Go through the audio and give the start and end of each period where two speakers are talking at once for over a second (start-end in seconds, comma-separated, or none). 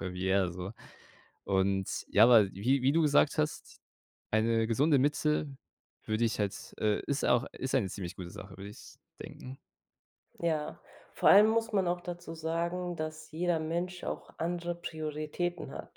none